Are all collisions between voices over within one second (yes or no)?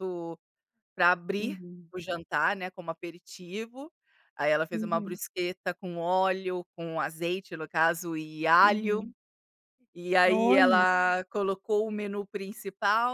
yes